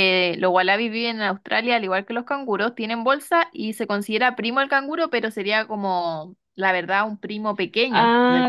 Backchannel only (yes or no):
no